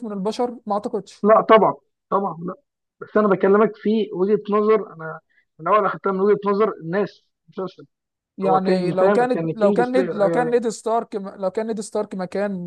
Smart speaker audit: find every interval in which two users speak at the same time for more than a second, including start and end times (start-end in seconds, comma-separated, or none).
8.4-10.6